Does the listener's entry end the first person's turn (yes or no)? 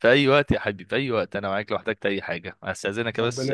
no